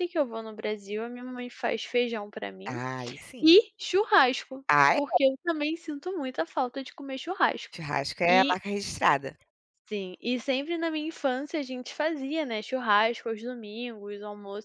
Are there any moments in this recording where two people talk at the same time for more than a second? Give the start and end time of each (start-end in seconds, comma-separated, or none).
none